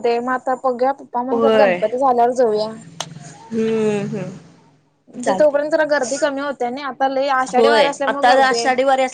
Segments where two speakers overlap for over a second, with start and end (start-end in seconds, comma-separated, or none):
none